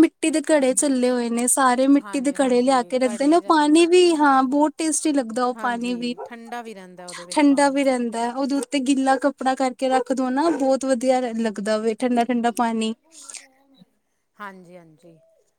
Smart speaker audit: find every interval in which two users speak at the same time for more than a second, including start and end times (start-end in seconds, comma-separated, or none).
2.1-3.8